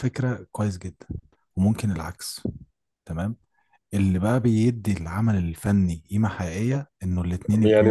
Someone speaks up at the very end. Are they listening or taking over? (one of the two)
taking over